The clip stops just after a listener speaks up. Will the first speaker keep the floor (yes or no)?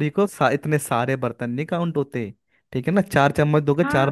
no